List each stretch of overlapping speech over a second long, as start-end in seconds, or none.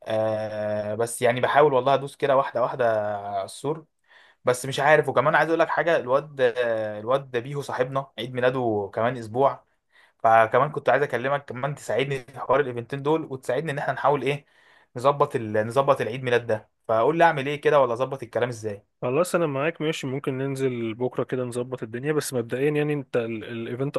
none